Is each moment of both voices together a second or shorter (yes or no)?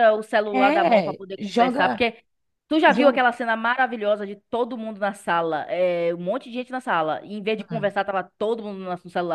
no